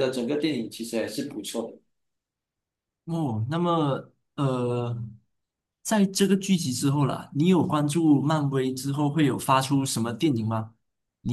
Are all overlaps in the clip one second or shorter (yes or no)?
yes